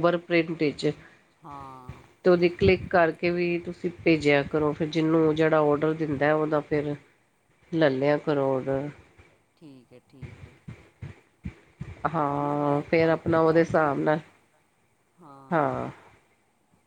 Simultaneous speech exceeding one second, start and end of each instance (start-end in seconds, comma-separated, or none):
12.3-13.9